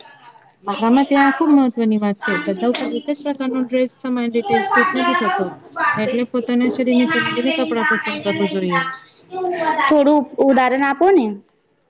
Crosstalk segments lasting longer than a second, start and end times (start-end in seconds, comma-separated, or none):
6.9-8.8